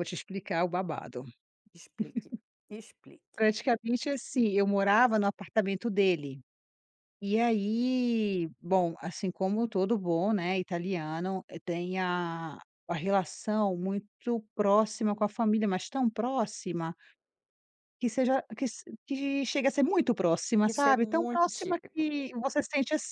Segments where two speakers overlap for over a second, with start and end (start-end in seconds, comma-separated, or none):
20.7-22.1